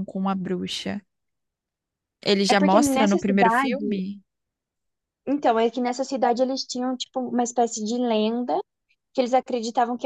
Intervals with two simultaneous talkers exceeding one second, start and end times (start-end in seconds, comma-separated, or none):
2.5-3.9